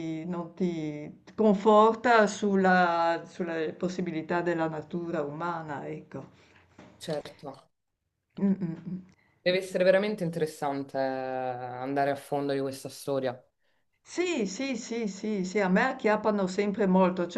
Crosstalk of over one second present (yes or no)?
no